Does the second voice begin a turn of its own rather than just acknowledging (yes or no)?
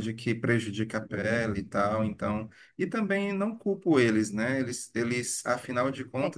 no